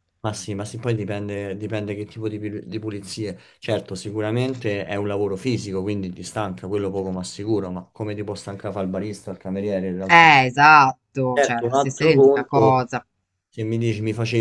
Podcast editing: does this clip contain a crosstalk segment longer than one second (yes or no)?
yes